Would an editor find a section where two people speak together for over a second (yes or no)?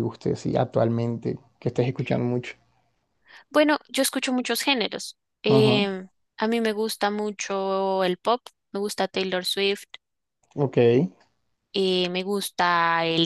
no